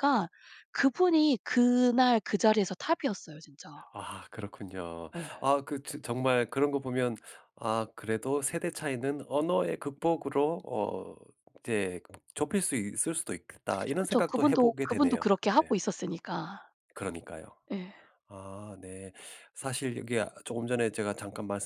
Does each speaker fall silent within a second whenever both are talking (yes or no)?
no